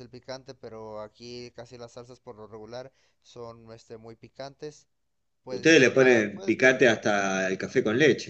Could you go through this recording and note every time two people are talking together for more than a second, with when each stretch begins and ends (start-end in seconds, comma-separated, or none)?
5.5-6.8